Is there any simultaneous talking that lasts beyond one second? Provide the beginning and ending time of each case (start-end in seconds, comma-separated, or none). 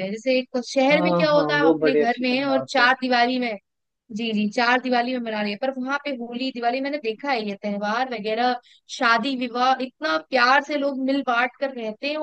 0.9-2.9